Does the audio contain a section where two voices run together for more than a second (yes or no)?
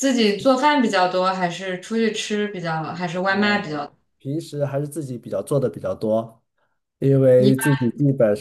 no